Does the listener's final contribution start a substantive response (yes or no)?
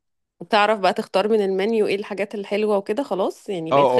yes